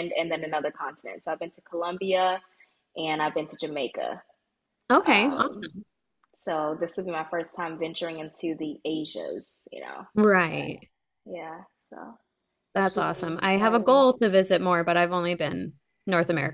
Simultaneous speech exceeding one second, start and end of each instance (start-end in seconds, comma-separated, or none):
12.8-14.0